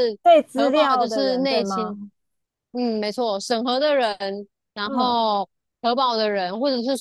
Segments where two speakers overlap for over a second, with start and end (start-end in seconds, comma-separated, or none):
0.6-2.0